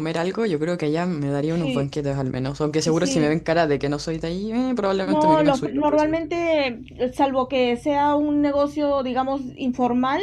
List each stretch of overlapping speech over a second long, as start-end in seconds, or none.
5.0-6.3